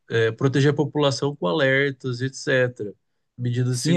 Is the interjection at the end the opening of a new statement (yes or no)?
yes